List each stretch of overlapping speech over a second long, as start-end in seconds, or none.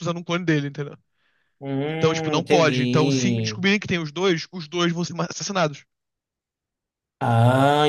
1.9-3.6